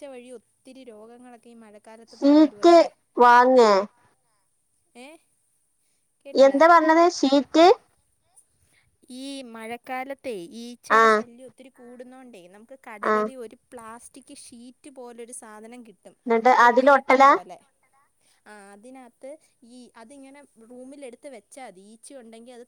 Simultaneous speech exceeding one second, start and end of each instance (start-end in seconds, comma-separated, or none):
none